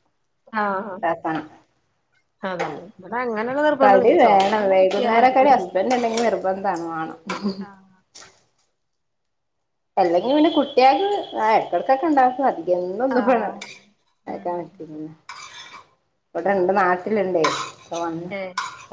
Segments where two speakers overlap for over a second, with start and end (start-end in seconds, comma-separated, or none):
3.8-5.4